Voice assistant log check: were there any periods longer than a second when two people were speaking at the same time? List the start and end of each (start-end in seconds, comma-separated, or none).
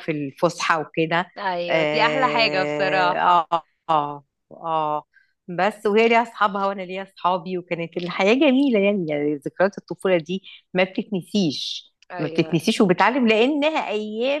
1.7-3.5